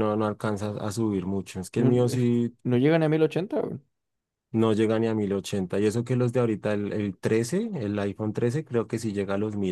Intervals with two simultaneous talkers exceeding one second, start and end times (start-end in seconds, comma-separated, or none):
none